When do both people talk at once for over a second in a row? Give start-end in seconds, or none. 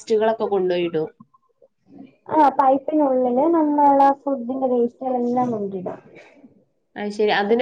none